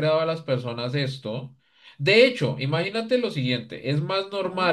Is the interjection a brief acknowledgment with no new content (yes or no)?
yes